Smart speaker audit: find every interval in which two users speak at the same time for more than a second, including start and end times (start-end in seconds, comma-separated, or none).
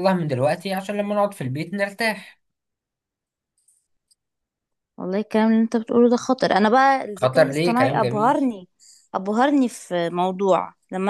7.2-8.5